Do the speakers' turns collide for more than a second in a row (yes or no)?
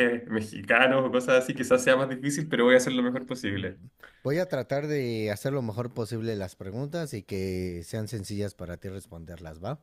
no